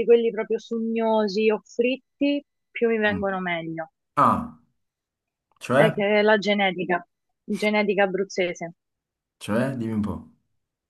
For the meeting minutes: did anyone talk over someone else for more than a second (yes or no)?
no